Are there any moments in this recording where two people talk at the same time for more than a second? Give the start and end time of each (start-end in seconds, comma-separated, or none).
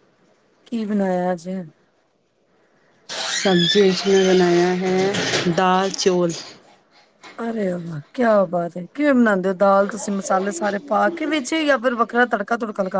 none